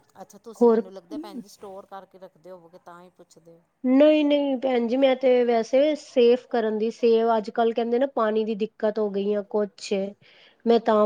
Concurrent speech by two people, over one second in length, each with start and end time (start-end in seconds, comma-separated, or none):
none